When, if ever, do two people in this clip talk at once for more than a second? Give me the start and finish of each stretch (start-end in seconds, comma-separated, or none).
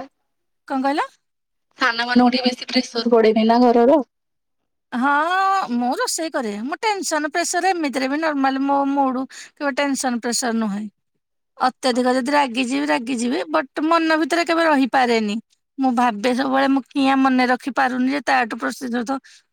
none